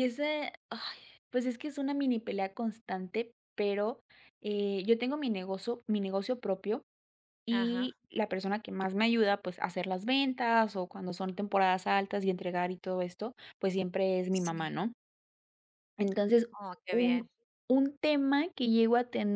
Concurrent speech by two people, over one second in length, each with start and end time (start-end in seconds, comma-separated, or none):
none